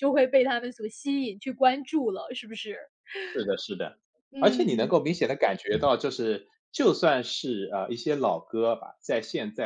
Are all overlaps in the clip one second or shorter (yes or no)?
yes